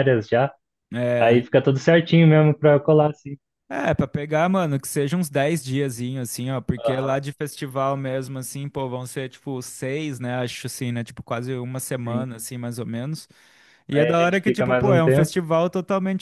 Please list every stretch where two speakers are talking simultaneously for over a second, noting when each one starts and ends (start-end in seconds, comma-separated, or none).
13.9-15.3